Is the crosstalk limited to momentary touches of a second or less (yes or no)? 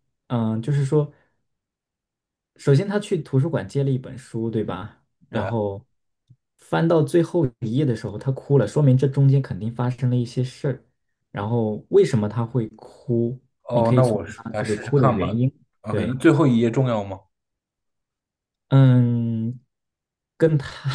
no